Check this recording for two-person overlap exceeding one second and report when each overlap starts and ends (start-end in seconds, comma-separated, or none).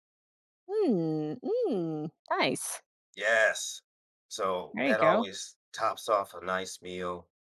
none